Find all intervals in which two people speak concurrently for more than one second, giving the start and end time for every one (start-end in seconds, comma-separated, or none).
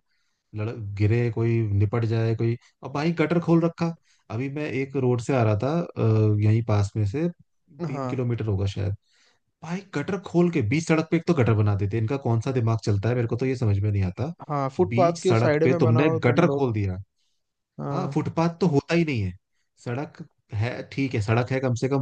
14.9-16.7